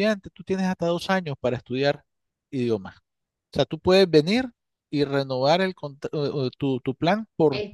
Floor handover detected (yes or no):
no